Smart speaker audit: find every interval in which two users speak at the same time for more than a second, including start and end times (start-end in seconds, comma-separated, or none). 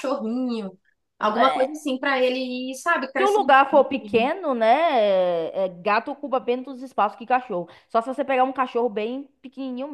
none